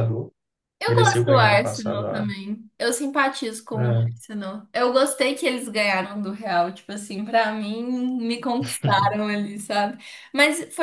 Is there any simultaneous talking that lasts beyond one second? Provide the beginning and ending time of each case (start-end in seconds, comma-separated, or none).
0.9-2.2